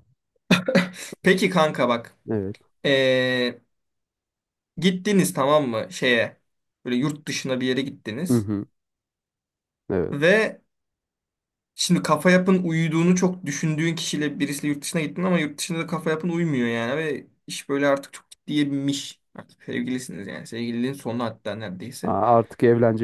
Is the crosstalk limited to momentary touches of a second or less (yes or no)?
yes